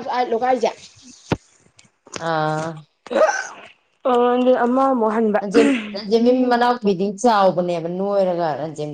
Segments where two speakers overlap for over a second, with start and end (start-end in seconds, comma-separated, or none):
none